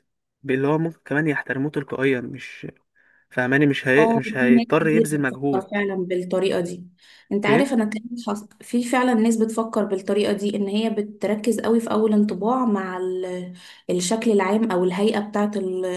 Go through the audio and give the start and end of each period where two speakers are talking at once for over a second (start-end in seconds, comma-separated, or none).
4.0-5.7